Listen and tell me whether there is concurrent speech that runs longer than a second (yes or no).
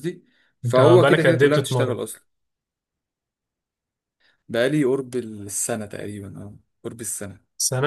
yes